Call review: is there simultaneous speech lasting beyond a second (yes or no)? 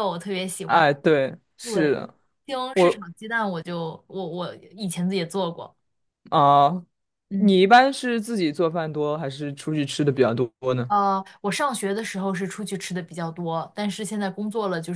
no